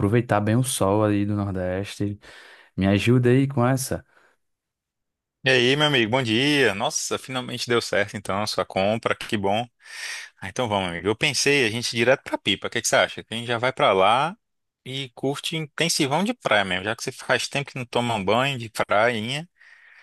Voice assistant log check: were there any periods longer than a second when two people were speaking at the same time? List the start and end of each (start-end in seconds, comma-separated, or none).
none